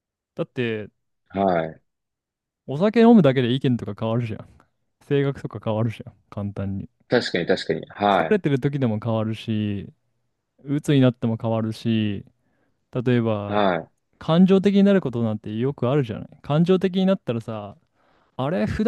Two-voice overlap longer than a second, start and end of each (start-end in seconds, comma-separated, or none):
none